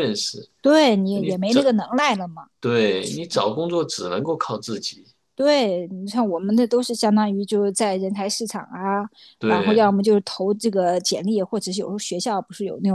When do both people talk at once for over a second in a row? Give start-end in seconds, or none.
none